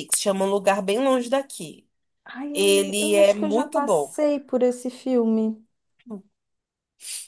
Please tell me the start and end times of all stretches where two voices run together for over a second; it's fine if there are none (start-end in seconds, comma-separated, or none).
2.5-4.2